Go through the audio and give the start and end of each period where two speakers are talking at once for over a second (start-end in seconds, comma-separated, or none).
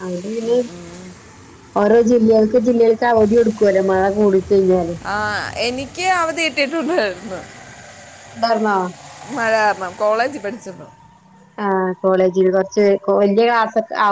none